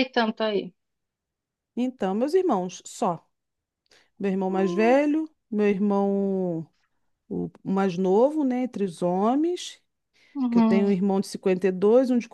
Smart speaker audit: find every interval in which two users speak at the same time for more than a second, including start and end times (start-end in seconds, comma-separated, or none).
none